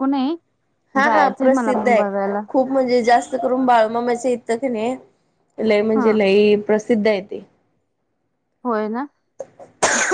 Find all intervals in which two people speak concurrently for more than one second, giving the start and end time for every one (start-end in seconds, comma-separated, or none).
1.0-2.4